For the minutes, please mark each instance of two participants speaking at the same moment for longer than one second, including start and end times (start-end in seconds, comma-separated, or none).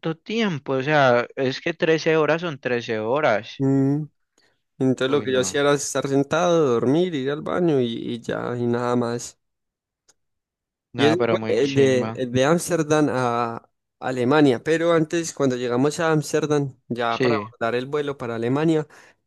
11.0-12.2